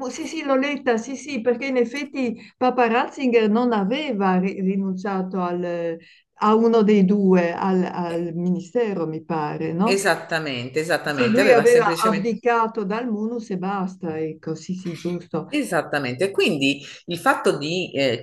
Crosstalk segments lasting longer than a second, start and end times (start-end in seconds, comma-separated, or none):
11.0-12.4